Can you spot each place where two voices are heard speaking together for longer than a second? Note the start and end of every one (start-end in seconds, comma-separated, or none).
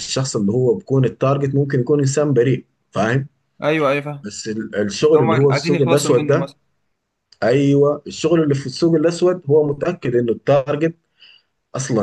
5.0-6.5